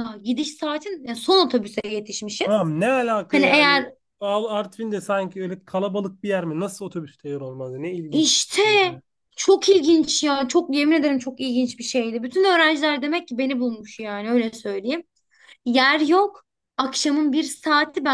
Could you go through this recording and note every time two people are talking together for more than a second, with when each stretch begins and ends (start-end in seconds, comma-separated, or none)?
none